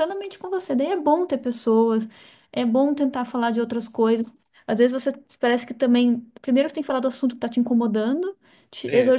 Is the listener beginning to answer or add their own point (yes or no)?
no